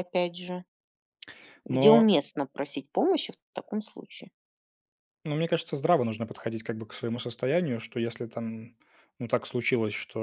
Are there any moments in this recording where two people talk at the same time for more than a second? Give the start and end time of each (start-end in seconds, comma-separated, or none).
none